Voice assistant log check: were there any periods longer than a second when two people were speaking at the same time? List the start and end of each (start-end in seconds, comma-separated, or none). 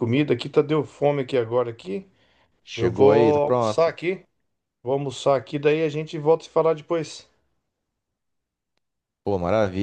2.8-4.0